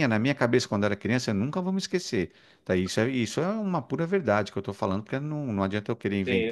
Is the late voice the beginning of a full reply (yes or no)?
no